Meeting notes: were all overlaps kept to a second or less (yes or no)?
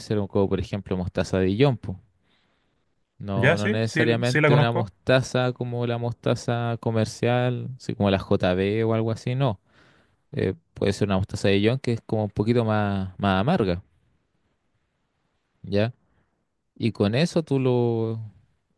no